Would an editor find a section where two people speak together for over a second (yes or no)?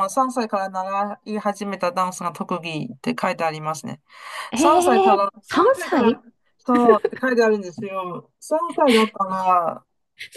yes